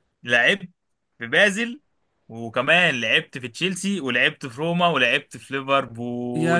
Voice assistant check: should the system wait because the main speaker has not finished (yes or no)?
no